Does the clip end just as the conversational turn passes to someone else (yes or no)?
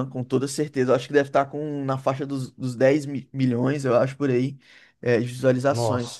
no